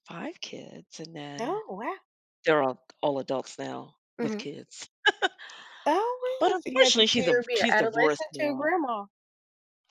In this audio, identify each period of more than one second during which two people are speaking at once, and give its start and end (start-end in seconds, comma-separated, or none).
6.4-8.7